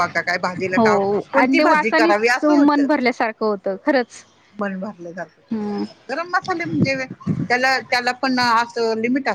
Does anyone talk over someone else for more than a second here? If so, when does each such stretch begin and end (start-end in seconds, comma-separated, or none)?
0.7-2.9